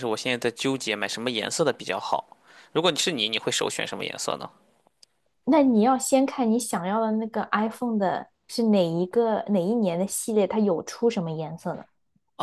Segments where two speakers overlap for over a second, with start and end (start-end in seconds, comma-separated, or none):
none